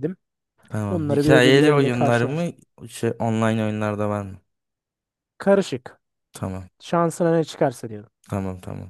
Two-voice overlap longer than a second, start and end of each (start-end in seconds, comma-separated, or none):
0.9-2.5